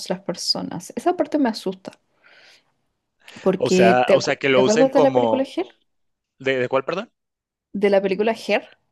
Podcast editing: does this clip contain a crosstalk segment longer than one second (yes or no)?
yes